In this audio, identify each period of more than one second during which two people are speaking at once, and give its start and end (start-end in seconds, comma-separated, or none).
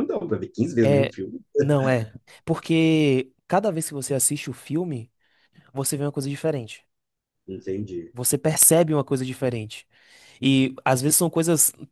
none